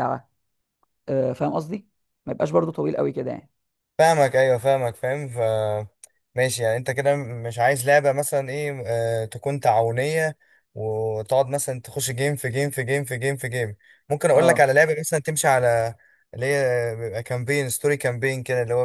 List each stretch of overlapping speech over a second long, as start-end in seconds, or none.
none